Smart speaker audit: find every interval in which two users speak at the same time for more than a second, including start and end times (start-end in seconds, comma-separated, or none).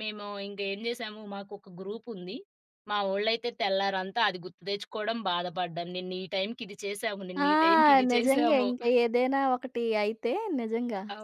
none